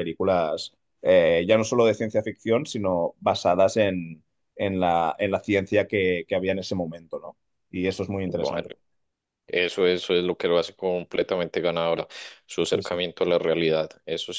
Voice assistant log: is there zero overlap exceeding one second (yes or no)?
yes